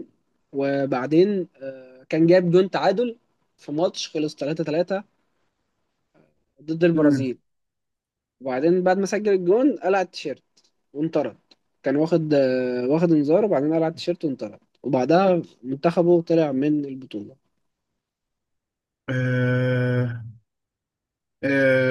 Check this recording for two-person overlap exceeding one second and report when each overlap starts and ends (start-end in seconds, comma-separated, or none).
none